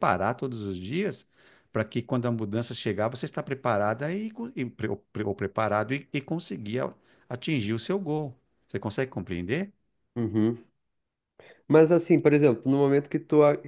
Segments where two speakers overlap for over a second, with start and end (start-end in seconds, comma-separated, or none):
none